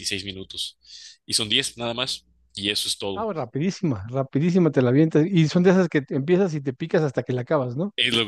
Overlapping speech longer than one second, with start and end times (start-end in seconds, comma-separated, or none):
none